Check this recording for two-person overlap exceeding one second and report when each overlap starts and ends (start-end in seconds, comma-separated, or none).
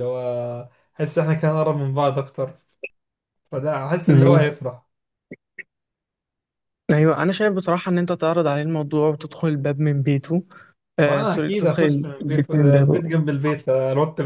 11.1-13.0